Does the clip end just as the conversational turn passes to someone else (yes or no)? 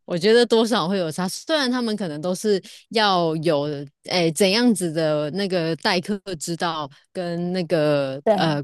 no